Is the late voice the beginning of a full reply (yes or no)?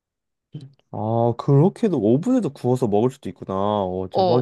yes